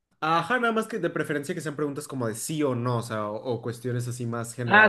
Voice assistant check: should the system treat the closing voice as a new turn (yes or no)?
yes